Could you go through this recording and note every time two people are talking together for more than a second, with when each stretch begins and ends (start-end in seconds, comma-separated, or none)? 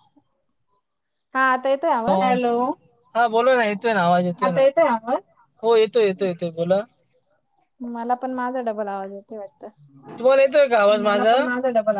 none